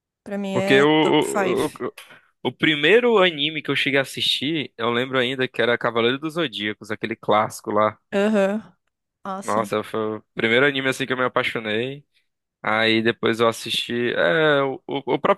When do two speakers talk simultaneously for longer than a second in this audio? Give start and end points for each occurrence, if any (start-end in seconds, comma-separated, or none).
0.5-1.8